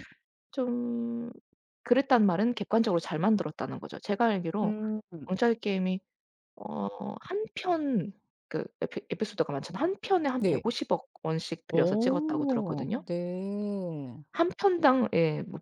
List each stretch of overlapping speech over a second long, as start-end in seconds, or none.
11.7-13.1